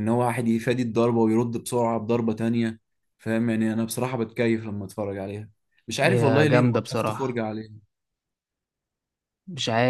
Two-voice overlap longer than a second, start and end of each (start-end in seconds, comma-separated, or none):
6.0-7.4